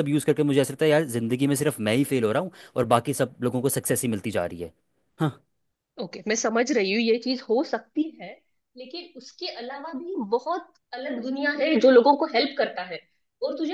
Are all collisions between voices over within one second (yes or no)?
yes